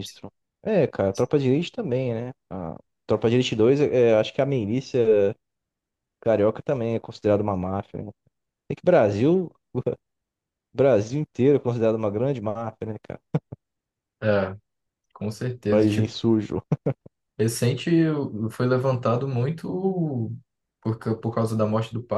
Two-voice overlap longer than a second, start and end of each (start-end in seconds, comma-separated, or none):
none